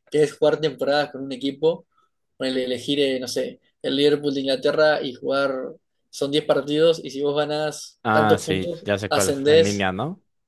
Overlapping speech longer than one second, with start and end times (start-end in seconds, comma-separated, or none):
8.0-9.9